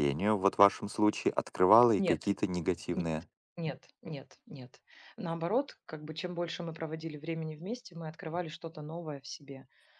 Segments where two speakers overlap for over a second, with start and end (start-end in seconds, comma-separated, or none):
none